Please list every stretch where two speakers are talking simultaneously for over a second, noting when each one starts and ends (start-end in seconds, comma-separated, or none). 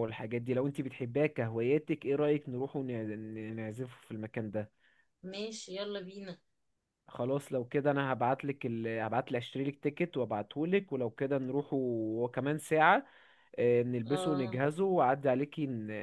none